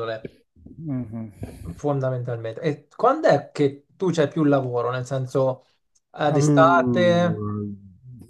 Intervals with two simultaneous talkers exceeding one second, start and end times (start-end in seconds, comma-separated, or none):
6.2-7.5